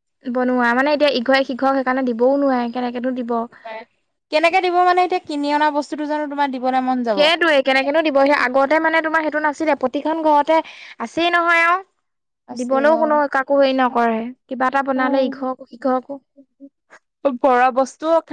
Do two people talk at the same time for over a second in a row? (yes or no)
no